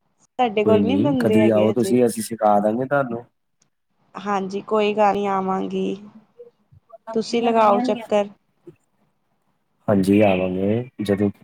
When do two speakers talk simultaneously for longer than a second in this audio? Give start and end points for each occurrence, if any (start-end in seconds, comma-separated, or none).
0.6-1.9